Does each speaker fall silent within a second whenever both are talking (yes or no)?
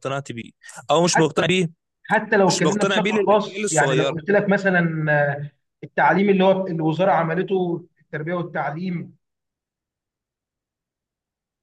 no